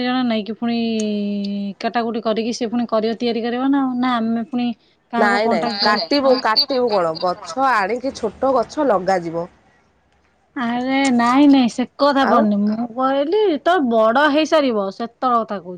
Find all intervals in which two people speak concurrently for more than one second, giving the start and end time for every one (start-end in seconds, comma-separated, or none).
5.2-7.8